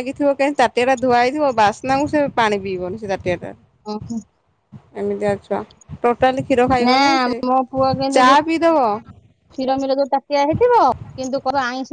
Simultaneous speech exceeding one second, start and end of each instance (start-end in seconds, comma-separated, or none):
none